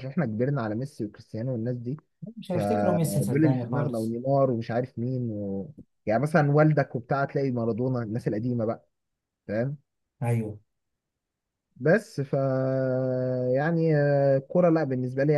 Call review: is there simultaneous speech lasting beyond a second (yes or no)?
yes